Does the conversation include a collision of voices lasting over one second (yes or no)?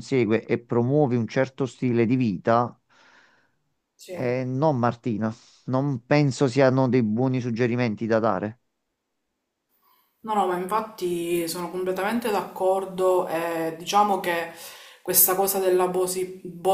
no